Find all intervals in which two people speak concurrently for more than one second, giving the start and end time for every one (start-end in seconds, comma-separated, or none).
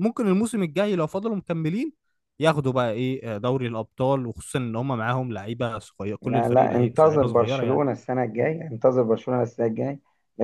6.2-7.8